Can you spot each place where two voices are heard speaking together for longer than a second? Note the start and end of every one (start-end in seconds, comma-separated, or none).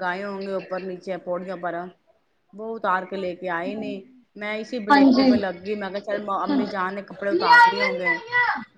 6.5-8.1